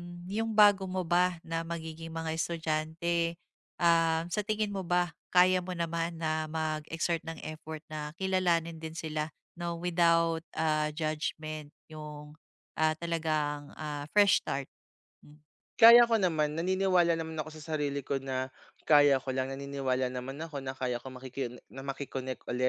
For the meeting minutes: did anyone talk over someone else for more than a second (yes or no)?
no